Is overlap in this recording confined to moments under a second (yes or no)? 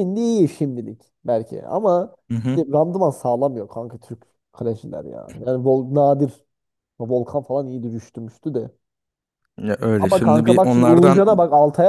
no